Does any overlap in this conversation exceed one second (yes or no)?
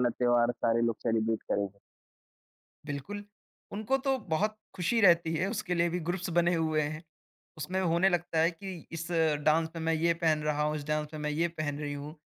no